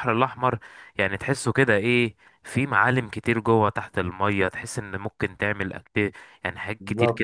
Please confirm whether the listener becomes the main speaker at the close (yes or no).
no